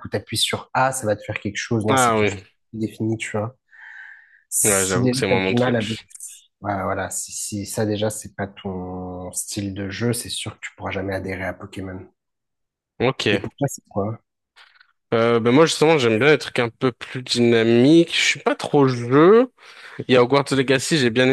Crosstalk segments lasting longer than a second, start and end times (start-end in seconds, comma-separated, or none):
4.6-6.0